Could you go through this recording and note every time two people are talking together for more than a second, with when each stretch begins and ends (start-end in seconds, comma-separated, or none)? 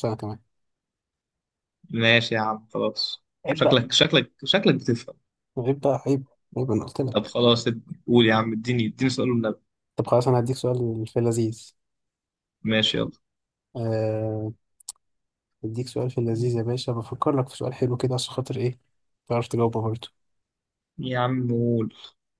none